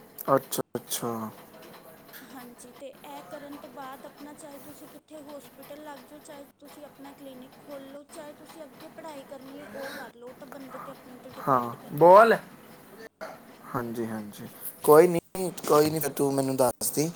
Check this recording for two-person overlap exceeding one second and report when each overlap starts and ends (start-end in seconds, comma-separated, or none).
none